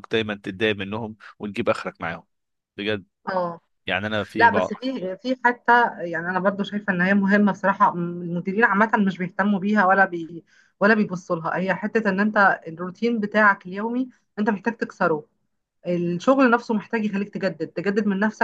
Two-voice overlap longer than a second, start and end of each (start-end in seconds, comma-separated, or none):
none